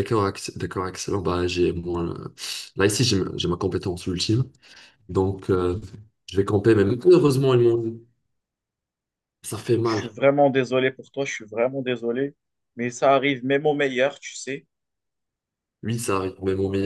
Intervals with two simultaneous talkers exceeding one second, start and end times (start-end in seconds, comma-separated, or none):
none